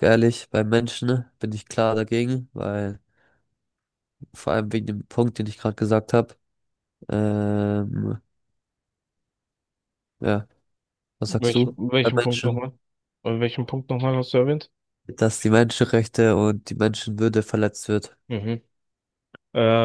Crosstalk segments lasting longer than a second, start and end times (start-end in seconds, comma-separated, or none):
11.3-12.6